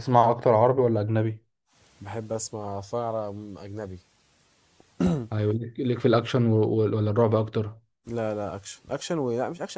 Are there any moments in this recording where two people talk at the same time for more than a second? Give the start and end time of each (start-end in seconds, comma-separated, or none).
none